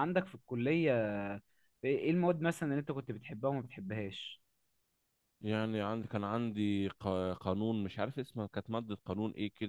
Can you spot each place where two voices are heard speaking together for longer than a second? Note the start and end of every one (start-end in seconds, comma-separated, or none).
none